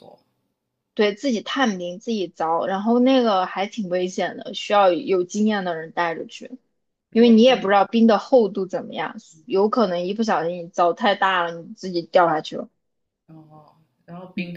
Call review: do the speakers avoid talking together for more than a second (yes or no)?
yes